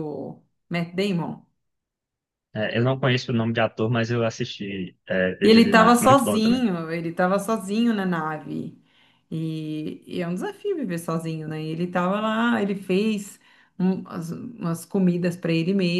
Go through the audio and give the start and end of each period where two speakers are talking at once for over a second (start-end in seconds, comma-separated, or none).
5.4-6.6